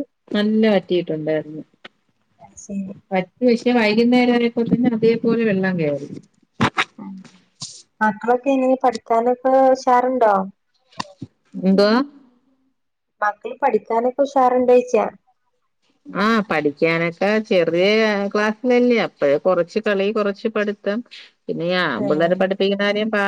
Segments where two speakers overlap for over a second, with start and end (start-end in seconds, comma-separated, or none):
none